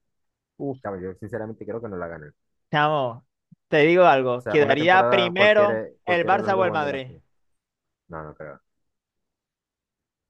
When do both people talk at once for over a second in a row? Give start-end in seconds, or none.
4.4-7.1